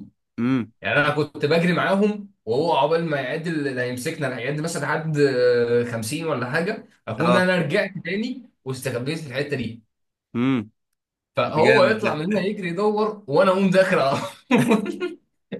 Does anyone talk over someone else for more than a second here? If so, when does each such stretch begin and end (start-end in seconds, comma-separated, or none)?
none